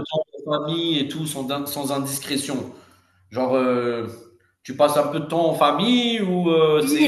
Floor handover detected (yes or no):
yes